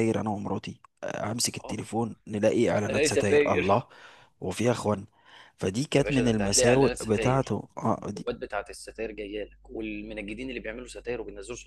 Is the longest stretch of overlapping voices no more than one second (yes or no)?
no